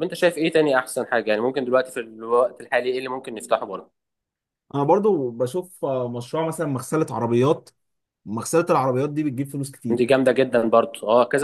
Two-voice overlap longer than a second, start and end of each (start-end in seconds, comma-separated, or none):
none